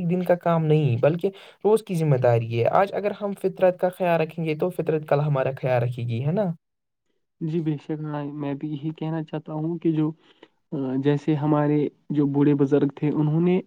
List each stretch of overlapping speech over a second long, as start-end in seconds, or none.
none